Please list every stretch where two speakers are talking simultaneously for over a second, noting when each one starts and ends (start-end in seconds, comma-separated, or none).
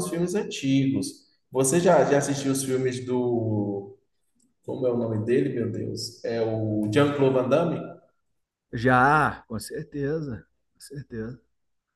none